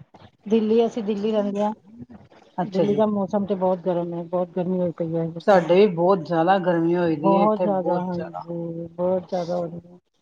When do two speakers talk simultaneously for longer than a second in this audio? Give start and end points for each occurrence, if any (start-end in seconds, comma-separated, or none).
7.2-8.4